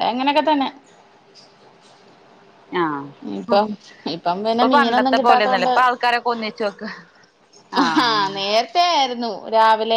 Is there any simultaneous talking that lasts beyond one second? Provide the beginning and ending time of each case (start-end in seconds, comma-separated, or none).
4.5-5.8